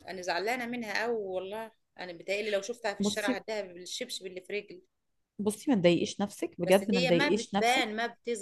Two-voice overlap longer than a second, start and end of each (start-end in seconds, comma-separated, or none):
6.7-7.9